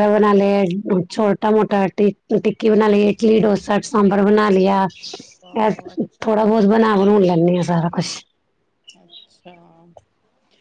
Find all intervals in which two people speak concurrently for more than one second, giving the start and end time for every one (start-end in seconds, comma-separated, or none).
none